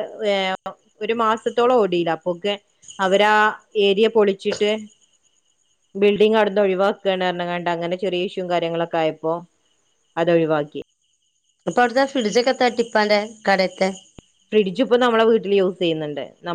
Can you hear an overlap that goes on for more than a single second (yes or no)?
no